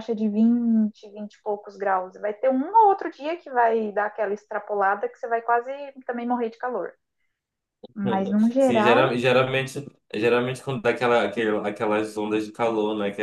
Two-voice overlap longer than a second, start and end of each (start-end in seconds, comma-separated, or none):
none